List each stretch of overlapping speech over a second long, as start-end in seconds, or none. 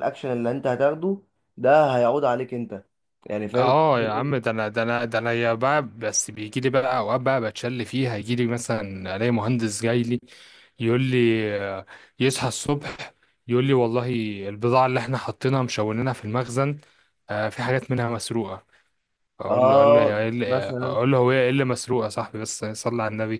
19.5-21.0